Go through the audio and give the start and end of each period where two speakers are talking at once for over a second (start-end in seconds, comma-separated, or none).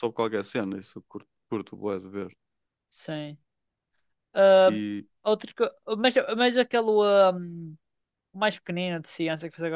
none